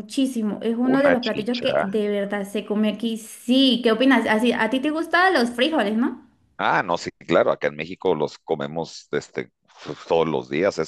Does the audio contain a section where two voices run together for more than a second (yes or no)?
yes